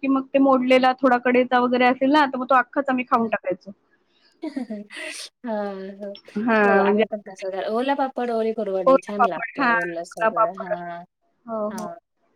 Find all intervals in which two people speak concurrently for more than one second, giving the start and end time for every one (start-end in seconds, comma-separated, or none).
8.8-10.7